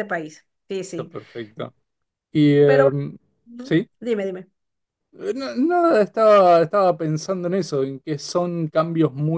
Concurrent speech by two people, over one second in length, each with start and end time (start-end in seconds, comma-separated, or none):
none